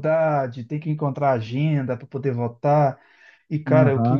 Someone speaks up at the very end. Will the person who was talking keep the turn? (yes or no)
yes